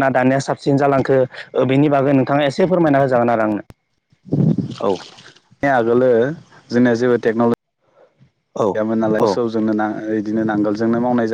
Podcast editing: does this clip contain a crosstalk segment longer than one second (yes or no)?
no